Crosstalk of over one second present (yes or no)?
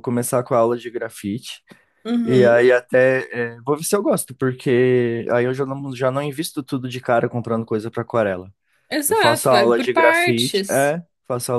yes